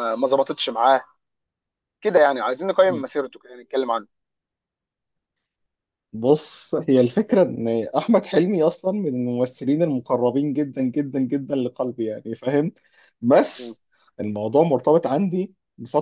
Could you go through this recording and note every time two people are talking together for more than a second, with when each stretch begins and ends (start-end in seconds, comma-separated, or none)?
none